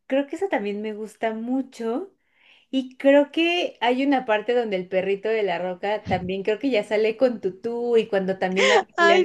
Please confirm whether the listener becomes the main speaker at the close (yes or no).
no